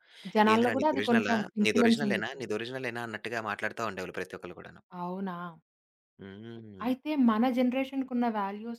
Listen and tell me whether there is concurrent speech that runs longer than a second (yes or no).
yes